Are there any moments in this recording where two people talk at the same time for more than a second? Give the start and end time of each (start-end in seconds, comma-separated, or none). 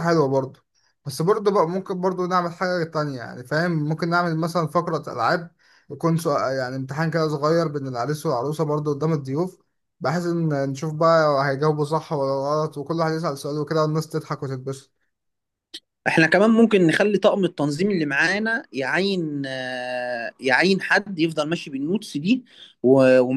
none